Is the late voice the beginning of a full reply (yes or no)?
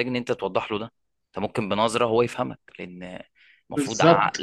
no